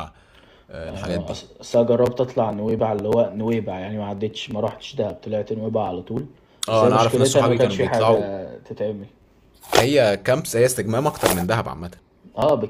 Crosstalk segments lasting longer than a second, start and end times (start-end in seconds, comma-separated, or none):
6.7-8.3